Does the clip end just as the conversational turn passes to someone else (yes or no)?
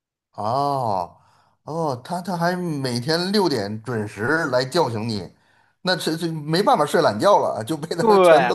yes